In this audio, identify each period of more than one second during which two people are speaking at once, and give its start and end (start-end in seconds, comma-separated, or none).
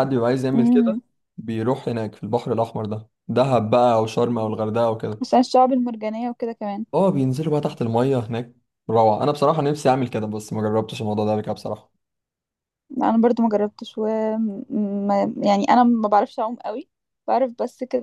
none